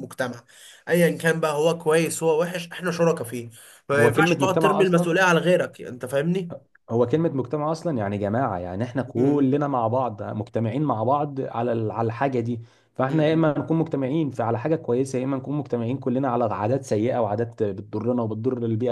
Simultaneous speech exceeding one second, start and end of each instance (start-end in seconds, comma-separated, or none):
3.9-5.2